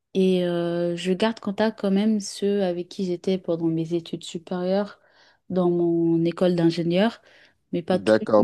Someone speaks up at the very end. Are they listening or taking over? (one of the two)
taking over